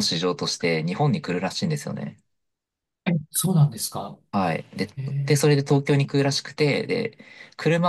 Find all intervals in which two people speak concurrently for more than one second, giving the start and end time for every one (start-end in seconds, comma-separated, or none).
none